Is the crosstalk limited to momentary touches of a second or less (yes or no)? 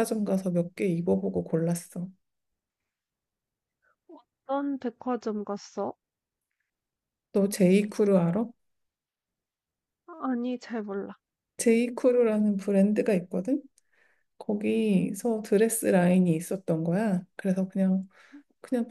yes